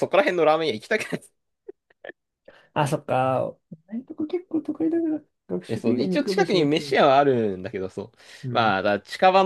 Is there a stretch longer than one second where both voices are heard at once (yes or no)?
yes